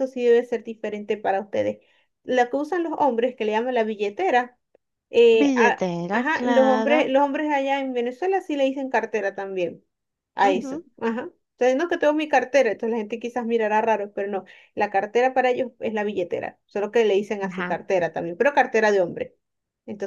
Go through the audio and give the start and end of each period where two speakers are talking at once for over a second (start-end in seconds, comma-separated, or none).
5.4-7.1